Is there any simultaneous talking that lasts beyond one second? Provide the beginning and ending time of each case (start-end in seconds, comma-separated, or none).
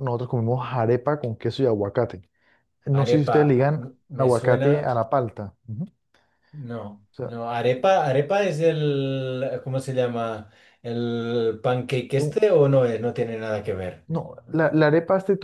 2.9-4.9